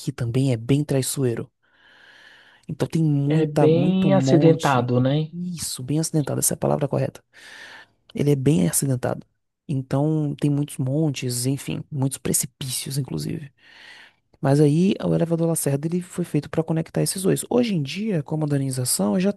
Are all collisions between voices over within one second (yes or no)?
no